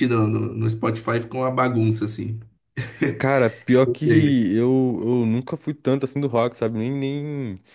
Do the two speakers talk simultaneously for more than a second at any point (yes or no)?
no